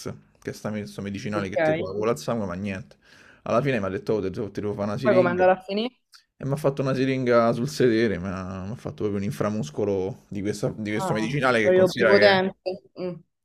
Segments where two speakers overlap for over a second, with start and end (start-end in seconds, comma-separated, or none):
11.0-12.4